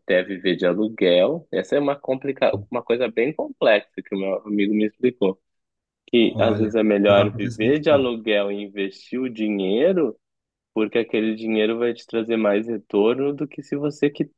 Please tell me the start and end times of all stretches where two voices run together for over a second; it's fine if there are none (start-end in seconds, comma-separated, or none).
6.2-8.1